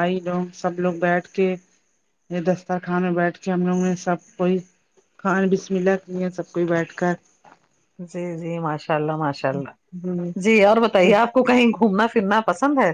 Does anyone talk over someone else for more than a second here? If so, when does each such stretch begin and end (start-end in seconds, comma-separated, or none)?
none